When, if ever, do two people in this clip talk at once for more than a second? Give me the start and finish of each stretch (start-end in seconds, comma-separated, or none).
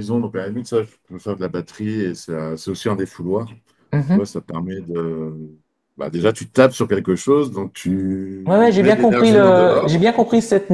8.5-10.0